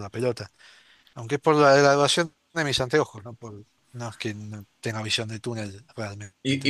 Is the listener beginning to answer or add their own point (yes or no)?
yes